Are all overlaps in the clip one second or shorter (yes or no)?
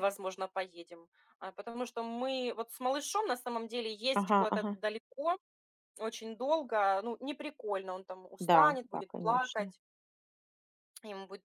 no